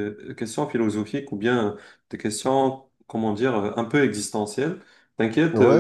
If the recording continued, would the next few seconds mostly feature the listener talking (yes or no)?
no